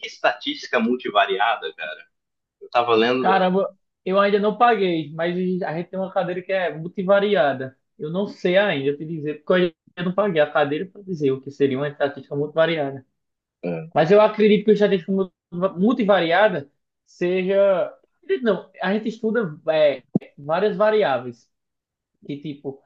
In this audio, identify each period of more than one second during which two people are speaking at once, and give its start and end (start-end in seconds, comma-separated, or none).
none